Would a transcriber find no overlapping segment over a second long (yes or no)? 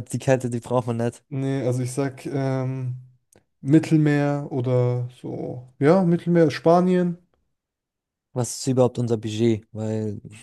yes